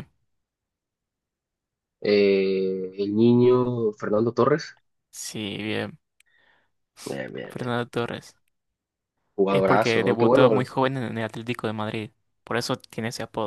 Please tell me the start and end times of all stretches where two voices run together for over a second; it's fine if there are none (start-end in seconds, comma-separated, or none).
9.5-10.7